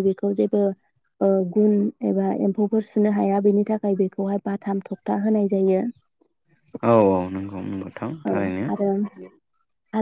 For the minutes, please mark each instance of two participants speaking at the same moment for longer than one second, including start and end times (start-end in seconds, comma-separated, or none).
none